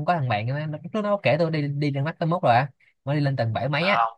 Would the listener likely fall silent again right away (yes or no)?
yes